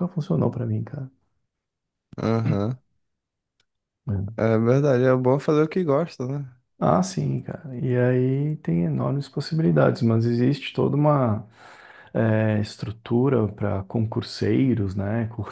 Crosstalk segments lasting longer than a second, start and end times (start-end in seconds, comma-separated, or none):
none